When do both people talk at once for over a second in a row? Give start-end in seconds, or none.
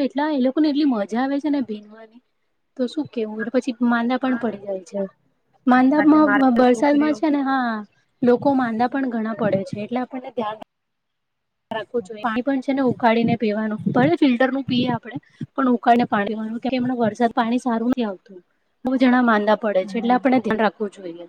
5.7-7.2